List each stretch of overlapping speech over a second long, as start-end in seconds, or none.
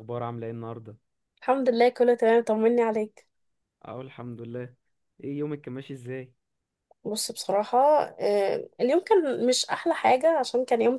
none